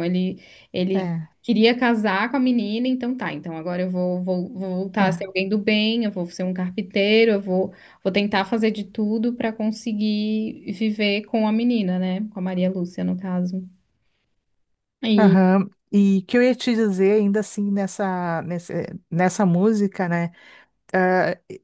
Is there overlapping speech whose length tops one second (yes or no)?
no